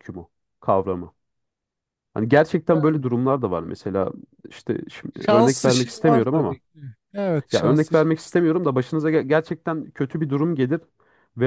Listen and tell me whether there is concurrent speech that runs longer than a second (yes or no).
yes